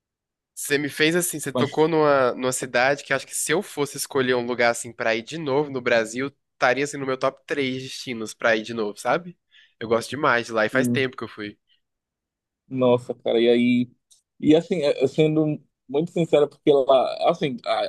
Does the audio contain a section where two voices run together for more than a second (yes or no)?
no